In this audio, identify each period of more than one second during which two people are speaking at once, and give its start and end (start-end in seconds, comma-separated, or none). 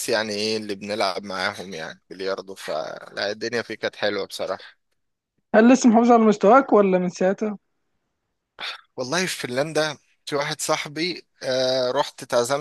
none